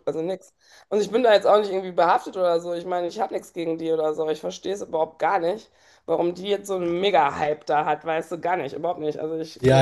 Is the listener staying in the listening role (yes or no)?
no